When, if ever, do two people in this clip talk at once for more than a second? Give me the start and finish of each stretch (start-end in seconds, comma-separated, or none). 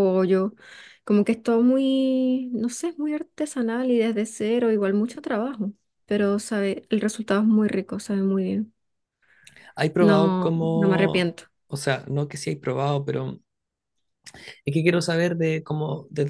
10.0-11.3